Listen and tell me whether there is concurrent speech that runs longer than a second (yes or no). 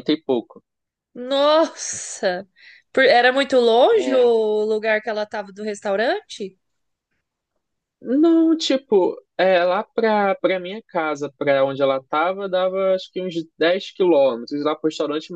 no